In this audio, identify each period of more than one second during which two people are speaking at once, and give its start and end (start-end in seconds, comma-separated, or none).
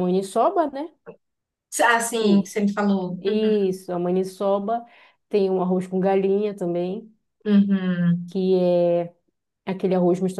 none